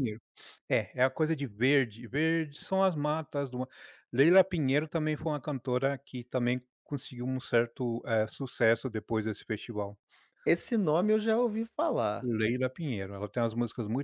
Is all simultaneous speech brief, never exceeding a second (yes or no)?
yes